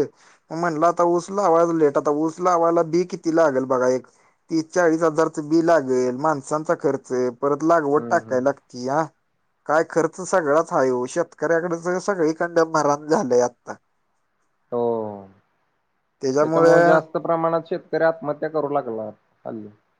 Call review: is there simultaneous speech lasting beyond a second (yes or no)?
no